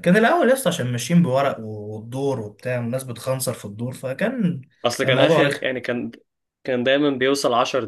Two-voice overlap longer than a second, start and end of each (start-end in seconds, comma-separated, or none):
none